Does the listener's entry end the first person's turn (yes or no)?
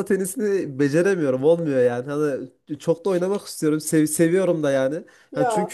no